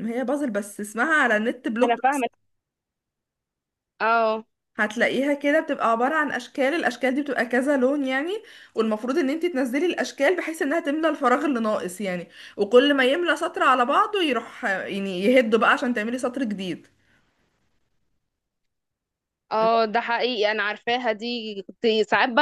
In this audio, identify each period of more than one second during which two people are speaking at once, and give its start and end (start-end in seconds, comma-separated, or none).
none